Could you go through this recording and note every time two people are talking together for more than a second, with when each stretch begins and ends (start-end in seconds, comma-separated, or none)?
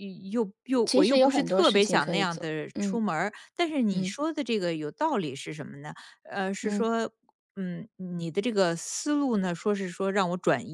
0.8-3.0